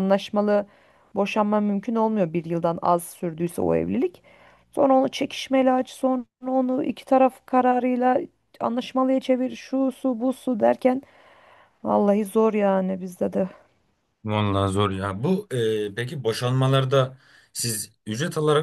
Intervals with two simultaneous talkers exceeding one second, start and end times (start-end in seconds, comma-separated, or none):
none